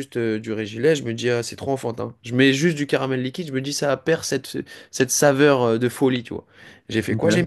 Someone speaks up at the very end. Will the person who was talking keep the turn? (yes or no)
yes